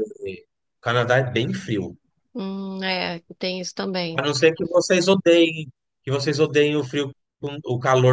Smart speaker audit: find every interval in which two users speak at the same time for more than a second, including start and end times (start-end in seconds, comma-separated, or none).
none